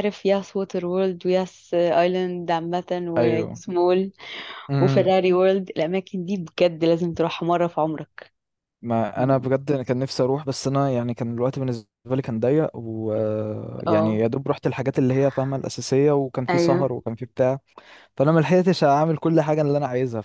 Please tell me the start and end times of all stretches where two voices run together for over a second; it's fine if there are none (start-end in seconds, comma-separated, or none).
none